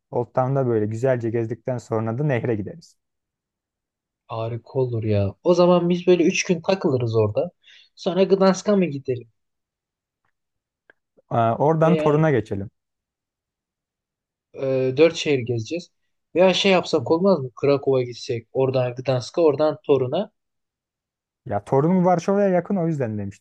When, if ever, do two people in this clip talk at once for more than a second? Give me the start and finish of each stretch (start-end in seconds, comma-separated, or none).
none